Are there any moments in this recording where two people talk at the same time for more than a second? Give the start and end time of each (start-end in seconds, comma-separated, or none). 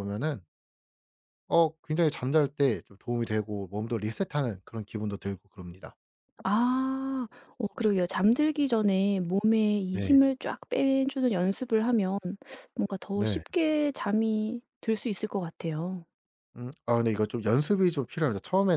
none